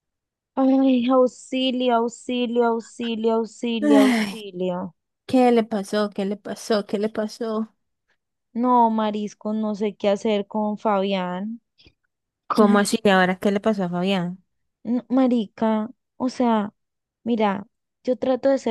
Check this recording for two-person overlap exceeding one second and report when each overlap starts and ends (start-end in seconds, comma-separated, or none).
none